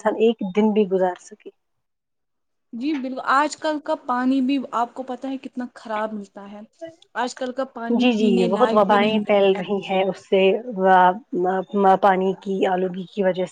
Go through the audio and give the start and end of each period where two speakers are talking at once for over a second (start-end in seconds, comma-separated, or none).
8.0-9.6